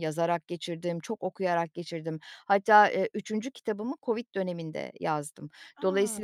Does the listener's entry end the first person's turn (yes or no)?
no